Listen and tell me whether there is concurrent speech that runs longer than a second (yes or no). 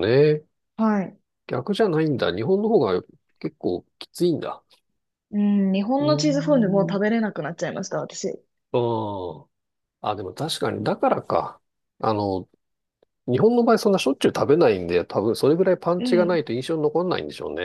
no